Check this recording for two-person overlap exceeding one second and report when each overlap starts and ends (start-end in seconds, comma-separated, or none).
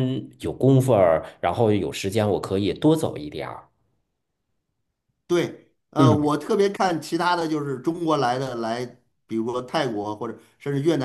none